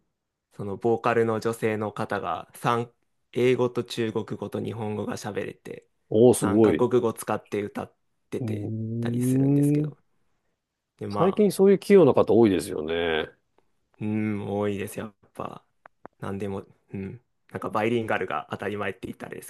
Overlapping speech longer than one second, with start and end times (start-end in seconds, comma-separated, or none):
8.4-9.9